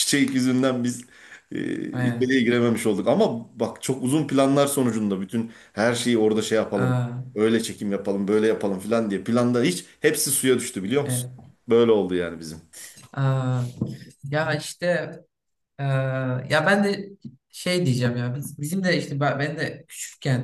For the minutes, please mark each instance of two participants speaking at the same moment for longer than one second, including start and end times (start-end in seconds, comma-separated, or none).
none